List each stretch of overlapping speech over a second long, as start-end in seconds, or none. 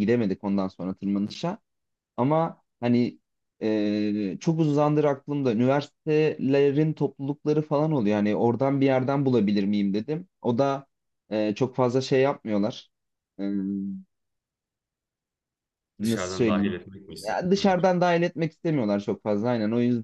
16.0-17.8